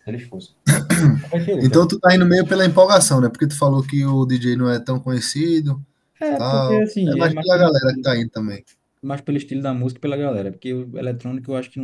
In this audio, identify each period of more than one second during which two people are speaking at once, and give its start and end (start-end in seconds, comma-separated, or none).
6.3-8.2